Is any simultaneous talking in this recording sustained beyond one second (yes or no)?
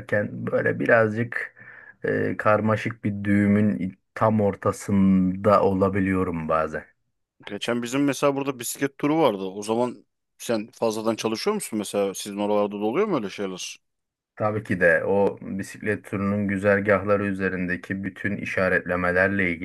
no